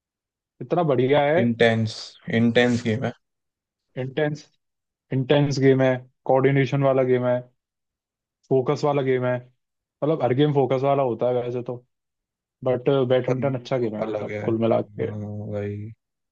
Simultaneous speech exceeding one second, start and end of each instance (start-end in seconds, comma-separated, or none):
13.3-15.1